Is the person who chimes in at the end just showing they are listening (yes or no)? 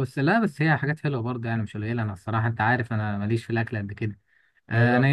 yes